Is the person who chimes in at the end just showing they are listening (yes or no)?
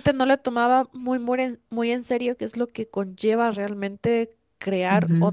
yes